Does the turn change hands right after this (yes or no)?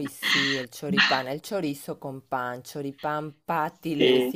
no